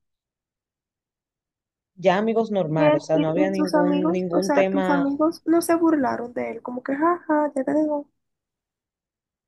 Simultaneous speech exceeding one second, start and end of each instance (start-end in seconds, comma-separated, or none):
2.7-5.0